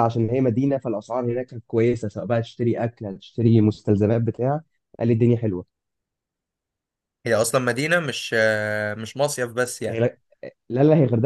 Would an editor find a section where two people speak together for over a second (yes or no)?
no